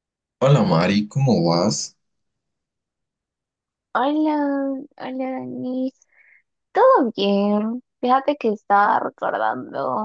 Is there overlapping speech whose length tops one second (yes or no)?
no